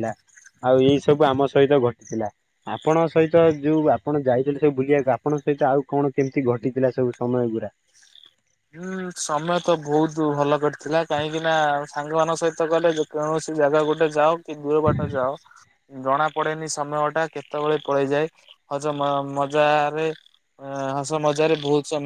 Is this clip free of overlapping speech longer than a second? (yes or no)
yes